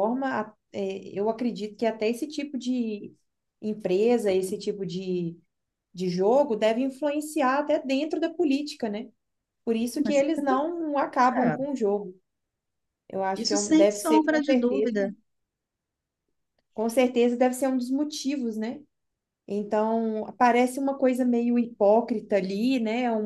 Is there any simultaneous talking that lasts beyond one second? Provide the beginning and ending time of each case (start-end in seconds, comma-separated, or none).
13.4-15.0